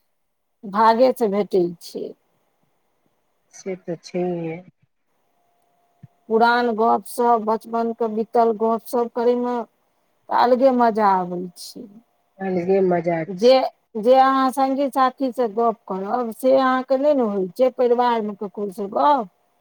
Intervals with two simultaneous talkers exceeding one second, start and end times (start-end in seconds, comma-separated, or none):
none